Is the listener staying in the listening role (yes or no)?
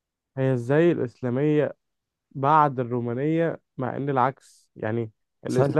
yes